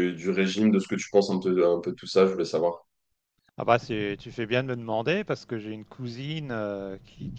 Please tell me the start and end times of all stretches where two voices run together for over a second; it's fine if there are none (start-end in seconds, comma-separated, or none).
none